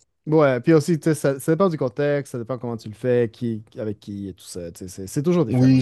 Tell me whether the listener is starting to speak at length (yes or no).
yes